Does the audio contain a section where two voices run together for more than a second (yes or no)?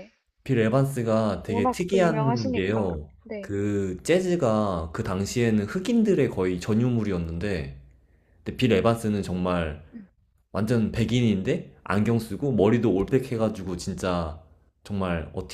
yes